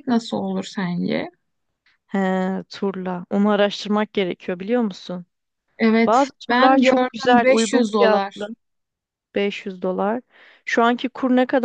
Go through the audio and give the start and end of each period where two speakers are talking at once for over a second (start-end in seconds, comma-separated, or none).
6.0-8.5